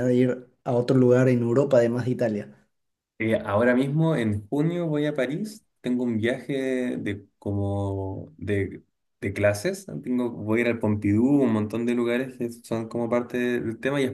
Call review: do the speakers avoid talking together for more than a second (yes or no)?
yes